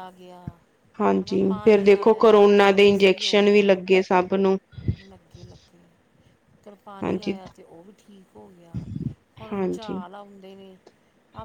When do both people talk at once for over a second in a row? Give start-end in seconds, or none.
1.0-3.6